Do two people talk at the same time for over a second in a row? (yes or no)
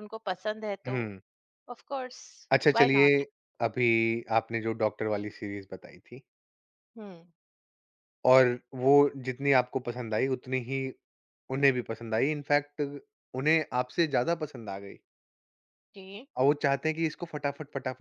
no